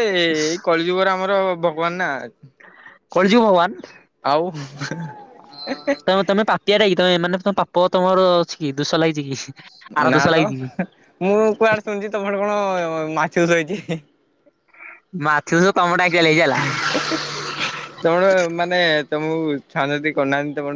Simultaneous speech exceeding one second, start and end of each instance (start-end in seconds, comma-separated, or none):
none